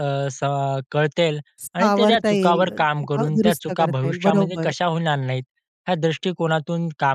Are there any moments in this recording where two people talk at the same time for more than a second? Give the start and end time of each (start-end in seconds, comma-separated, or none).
1.8-4.7